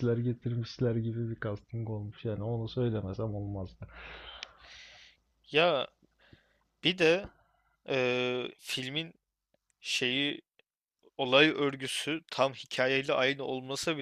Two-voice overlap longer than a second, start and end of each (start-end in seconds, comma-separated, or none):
none